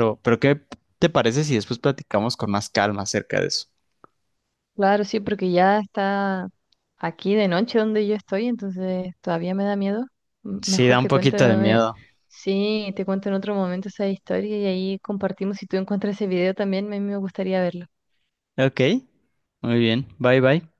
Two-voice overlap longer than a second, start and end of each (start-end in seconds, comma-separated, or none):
10.6-11.8